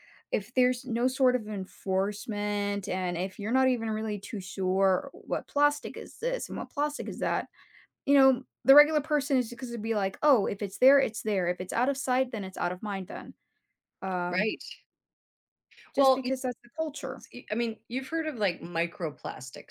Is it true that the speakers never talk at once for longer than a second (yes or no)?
yes